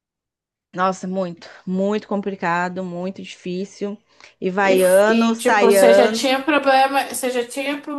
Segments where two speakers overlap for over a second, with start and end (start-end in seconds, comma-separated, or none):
4.6-6.4